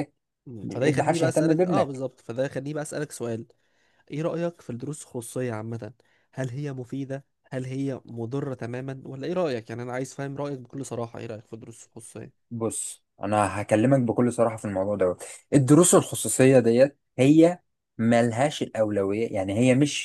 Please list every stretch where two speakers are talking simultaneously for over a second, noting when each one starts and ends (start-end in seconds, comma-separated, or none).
0.6-2.0